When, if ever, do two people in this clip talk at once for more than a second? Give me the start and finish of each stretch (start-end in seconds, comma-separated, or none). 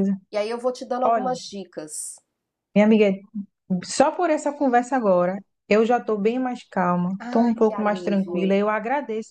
7.2-8.4